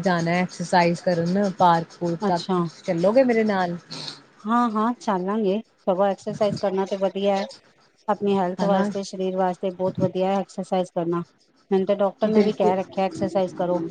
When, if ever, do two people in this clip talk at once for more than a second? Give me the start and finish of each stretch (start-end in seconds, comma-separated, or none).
none